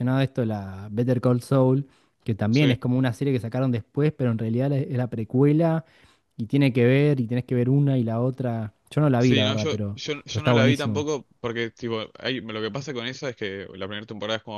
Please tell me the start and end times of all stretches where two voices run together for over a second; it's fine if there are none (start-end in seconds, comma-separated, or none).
9.2-11.1